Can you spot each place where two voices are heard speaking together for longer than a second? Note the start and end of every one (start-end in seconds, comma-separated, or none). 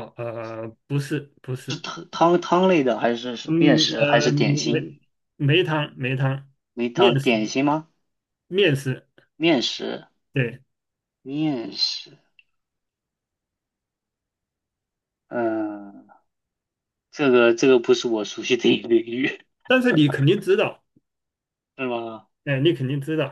3.5-4.9